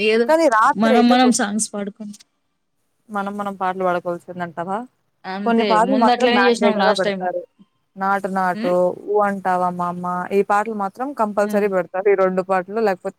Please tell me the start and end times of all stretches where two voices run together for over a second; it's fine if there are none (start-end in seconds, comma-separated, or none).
5.5-7.3